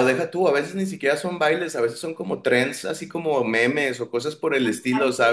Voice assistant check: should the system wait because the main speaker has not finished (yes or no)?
yes